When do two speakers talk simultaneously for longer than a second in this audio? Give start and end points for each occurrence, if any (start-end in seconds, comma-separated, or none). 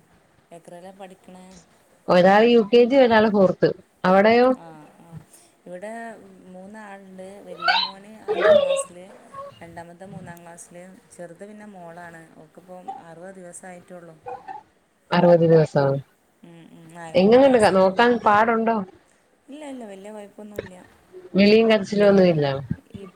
none